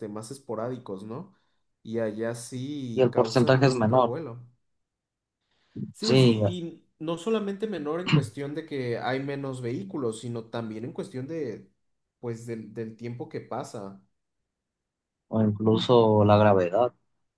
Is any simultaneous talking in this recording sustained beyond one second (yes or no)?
yes